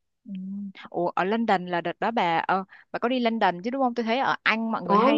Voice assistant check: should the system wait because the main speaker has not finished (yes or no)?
yes